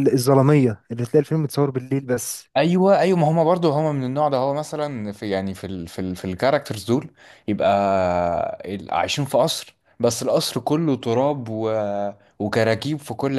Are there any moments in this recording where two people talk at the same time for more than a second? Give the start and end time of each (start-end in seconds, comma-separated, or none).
none